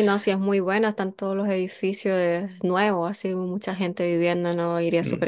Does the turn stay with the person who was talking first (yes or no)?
no